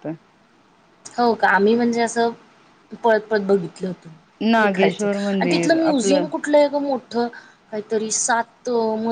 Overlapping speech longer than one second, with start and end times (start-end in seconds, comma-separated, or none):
4.6-6.2